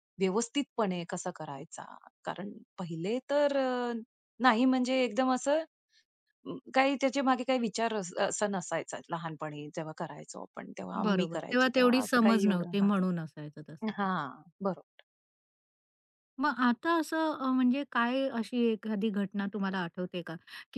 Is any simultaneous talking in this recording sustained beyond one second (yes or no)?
yes